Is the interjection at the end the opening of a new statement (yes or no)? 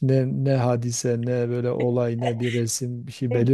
yes